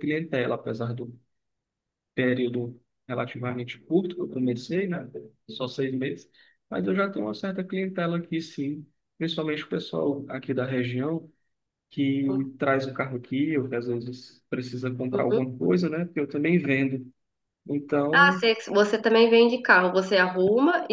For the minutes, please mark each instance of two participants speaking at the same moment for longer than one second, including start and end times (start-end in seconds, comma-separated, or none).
none